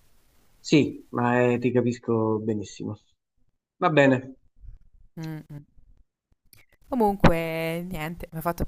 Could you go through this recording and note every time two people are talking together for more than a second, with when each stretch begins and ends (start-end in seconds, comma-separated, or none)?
none